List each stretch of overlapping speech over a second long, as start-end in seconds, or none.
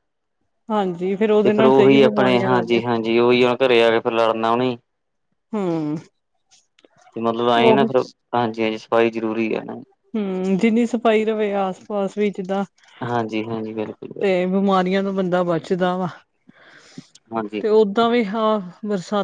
1.4-2.8